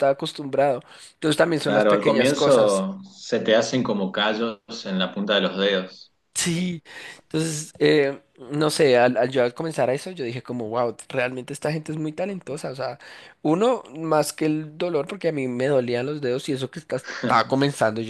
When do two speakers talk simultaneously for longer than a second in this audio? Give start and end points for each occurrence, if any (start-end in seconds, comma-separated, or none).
1.6-2.9